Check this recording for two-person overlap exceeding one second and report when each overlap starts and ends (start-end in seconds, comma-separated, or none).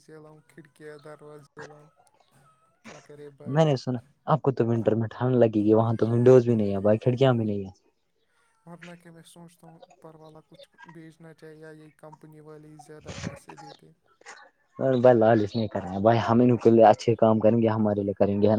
none